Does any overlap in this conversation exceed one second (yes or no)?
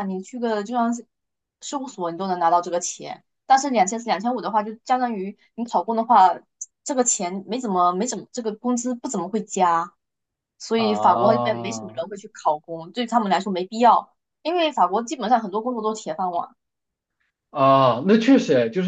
yes